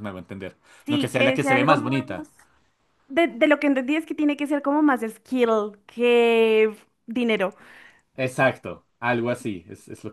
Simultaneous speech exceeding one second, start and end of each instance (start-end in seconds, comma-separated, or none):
0.8-2.1